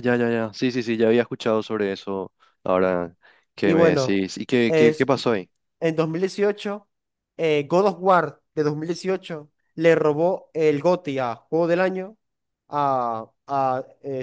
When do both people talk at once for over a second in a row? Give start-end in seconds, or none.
none